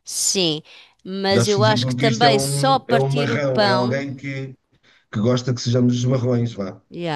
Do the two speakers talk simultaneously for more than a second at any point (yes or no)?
yes